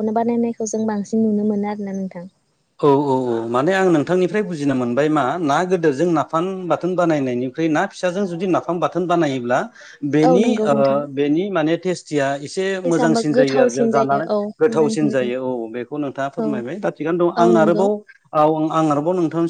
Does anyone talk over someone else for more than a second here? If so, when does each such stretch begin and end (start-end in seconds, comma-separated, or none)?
12.9-15.1